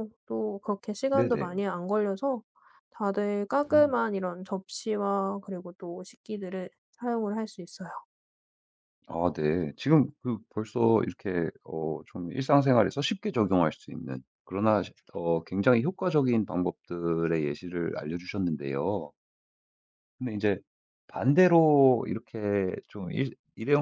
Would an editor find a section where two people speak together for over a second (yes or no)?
no